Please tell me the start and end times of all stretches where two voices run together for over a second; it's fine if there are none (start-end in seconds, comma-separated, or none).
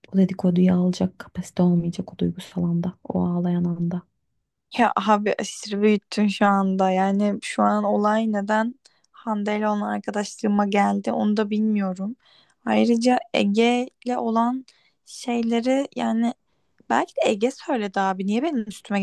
none